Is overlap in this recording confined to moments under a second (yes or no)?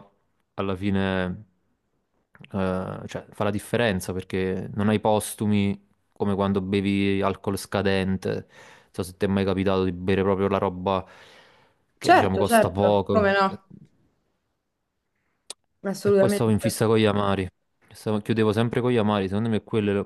no